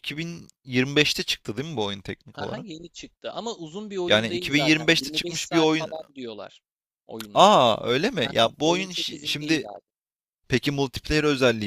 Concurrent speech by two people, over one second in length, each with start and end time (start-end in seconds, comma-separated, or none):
4.1-5.9, 8.2-9.7